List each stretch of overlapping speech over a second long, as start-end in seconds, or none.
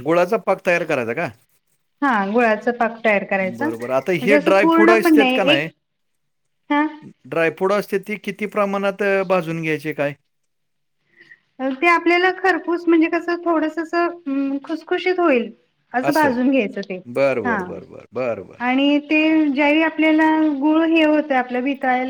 3.6-5.4